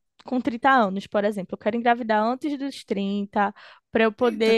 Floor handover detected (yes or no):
no